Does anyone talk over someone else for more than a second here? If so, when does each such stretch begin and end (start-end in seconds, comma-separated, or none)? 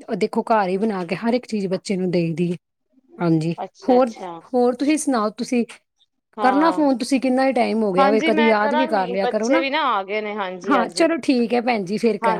8.0-9.6